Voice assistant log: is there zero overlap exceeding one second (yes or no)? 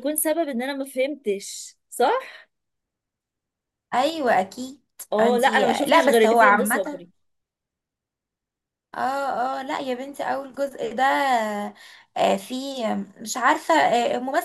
no